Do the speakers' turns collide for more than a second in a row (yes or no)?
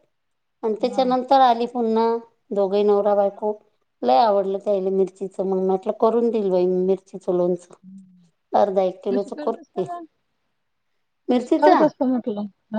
no